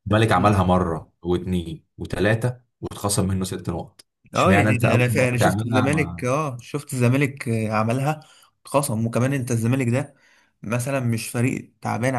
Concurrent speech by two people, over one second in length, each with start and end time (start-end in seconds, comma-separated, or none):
4.3-6.3